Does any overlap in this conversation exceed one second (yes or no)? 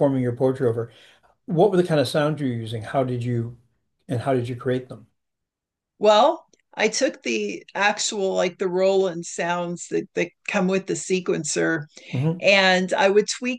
no